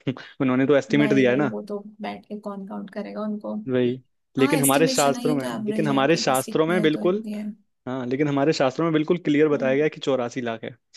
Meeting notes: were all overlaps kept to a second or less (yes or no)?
no